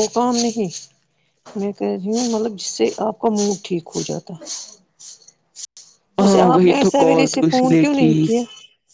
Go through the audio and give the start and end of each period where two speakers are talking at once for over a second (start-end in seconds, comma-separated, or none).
6.2-8.1